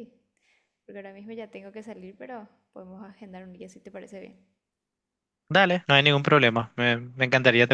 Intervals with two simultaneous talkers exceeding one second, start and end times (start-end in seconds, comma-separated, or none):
none